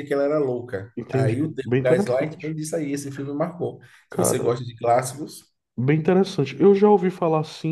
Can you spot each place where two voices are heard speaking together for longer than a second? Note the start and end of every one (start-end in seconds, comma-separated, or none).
0.9-2.5